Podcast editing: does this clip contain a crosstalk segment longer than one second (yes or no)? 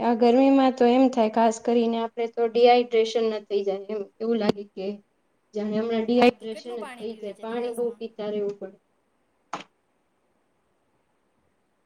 yes